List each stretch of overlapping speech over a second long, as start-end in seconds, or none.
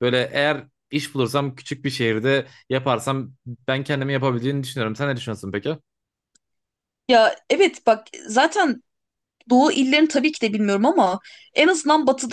none